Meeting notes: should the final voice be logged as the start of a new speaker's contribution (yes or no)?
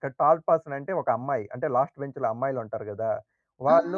yes